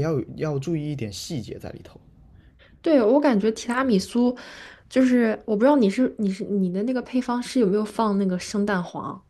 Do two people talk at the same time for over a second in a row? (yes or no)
no